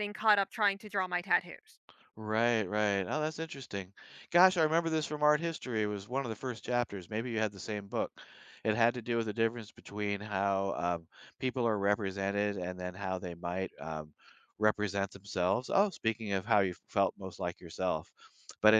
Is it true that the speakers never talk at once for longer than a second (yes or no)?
yes